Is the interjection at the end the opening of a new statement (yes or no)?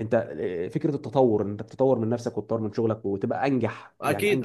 yes